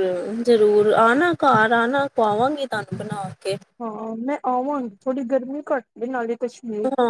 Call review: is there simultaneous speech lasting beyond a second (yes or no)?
no